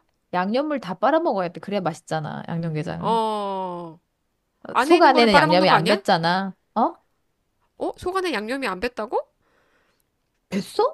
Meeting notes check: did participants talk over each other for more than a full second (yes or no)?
yes